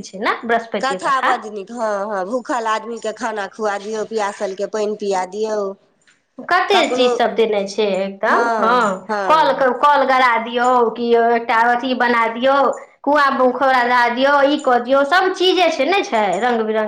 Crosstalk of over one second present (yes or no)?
no